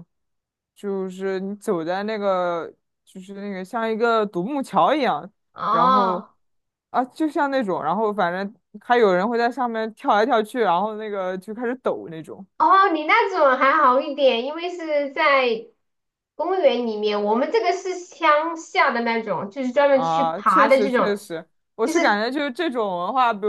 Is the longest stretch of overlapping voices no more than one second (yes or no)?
no